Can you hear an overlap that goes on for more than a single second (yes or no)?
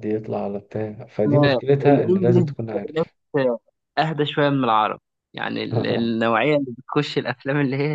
yes